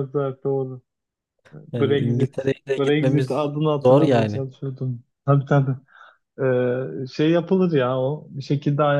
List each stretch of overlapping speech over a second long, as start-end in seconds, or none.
1.7-4.4